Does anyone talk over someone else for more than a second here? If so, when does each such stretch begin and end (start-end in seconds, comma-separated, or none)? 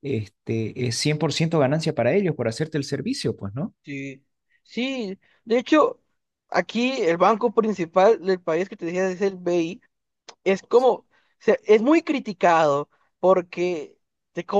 none